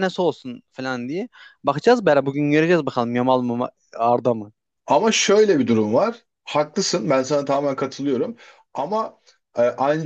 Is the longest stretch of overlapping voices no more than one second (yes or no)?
yes